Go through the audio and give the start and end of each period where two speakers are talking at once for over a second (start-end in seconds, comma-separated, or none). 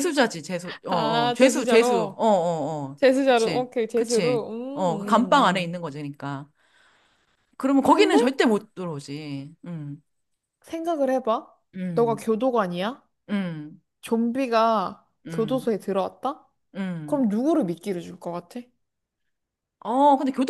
0.9-2.2, 3.0-5.8